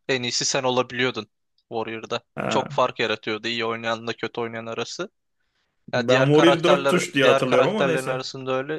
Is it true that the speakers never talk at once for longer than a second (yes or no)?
no